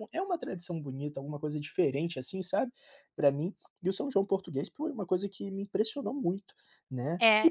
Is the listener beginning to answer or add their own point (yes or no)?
yes